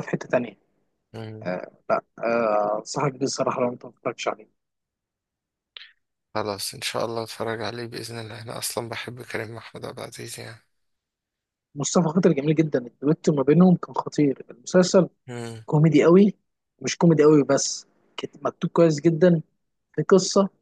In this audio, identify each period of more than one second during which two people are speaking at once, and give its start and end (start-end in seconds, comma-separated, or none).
none